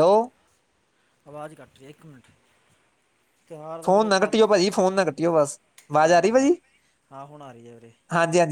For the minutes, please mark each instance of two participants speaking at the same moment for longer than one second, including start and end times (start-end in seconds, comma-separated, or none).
none